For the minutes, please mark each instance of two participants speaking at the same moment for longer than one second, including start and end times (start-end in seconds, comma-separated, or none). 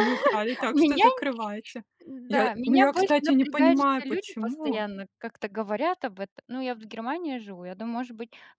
2.3-4.8